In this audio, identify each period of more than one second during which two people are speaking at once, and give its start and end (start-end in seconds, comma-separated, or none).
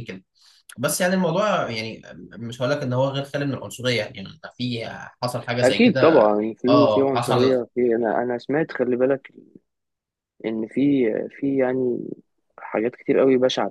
5.6-7.6